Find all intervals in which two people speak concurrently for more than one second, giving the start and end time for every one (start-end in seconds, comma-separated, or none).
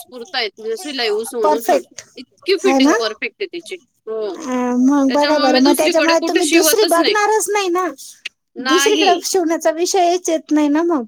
5.1-7.2